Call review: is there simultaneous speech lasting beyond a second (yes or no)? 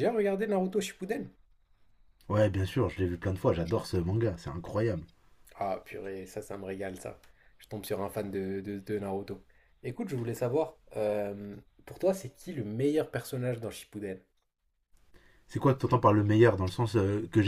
no